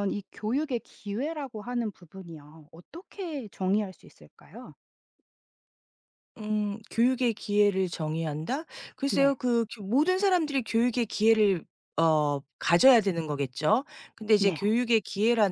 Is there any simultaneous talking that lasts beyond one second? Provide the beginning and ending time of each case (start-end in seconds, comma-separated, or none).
none